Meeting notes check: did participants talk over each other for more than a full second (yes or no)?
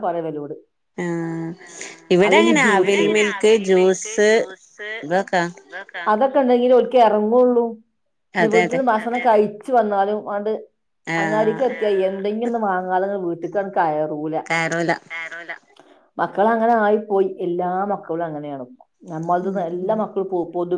no